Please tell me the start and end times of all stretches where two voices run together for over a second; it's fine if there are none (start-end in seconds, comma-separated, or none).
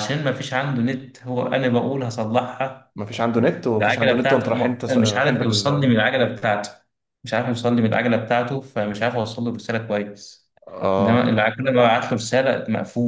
3.8-6.0